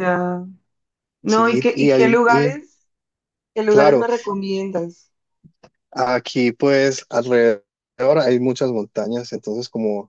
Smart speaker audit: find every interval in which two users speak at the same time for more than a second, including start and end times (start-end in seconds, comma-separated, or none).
1.2-2.6